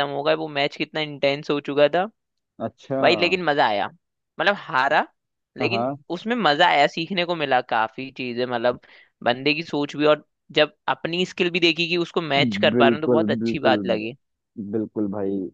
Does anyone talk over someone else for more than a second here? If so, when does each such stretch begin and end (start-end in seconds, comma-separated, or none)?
12.4-13.8